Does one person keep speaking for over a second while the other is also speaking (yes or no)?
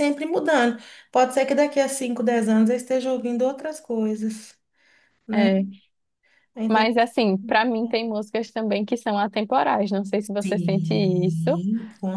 yes